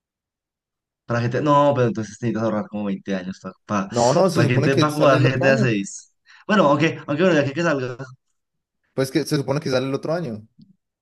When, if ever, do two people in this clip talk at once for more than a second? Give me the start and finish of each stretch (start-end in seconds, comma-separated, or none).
4.3-5.7